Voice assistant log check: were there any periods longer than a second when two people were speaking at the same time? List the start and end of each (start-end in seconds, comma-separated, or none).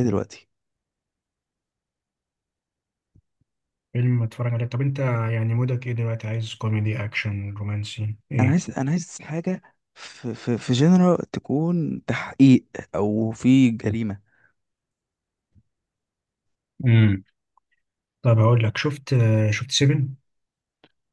none